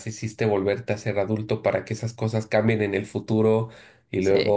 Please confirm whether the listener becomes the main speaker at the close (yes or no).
no